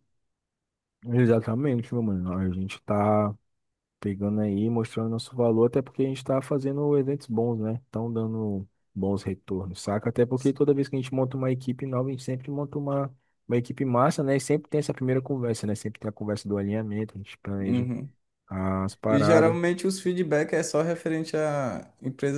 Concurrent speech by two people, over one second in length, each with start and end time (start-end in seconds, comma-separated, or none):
none